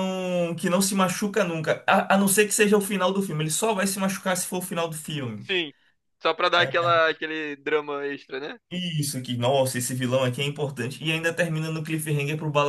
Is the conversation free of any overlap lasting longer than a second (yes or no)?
yes